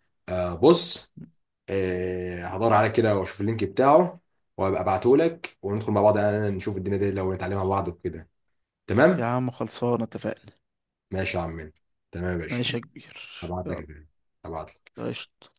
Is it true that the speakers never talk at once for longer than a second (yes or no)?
yes